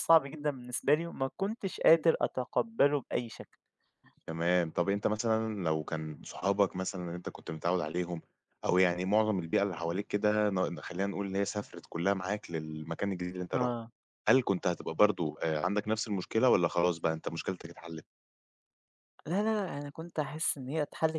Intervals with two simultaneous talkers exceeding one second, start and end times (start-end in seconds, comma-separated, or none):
none